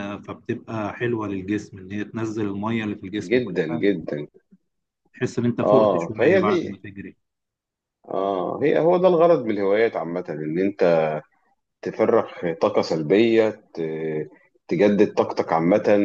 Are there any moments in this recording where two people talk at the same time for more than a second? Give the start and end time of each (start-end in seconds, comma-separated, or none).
5.6-6.8